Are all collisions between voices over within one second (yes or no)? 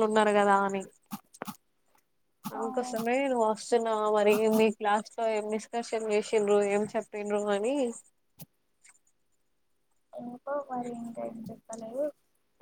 yes